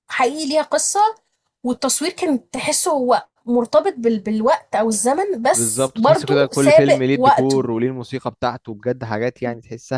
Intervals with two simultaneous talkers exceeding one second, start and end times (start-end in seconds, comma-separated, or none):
5.5-7.7